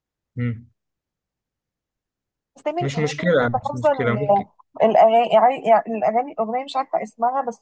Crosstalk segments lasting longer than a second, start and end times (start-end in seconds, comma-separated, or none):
2.8-4.5